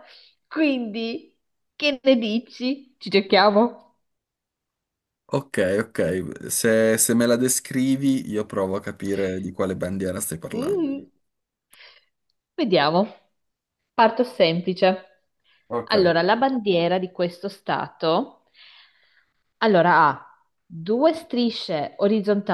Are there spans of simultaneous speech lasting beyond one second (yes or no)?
no